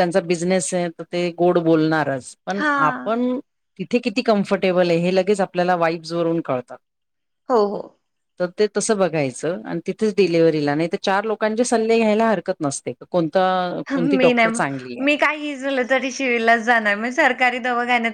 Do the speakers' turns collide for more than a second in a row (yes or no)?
no